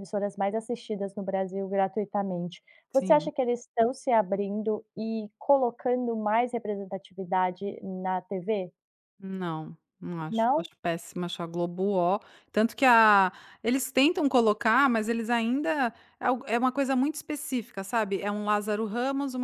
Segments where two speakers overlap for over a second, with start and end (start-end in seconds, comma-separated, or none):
none